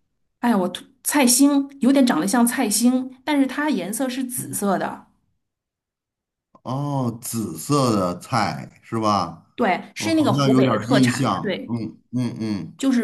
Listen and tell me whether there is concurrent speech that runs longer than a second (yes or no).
yes